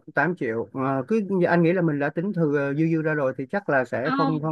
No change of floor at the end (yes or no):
yes